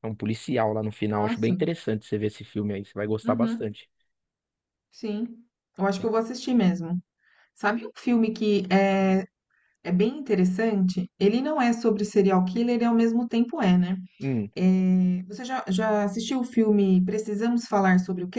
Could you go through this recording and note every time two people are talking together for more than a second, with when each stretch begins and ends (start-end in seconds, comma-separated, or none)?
none